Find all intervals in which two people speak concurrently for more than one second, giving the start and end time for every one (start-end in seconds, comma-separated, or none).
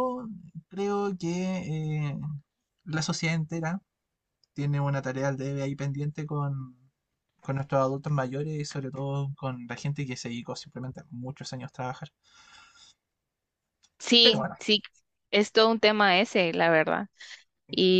none